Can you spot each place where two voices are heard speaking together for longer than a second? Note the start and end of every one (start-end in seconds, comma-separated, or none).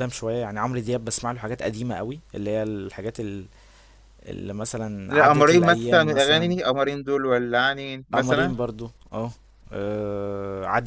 5.1-6.5